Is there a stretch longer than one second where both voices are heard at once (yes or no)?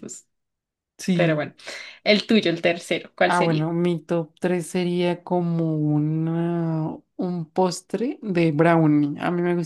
no